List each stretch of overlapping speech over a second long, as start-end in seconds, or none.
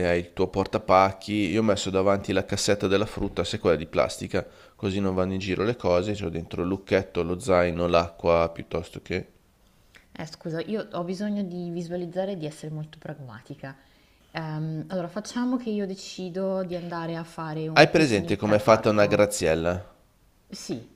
17.7-19.2